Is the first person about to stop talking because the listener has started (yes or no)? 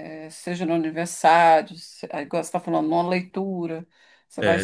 no